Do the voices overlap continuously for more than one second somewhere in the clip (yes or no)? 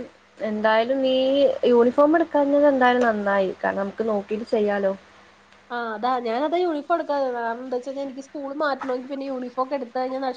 no